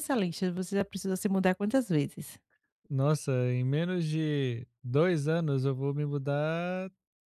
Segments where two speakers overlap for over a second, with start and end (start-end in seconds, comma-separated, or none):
none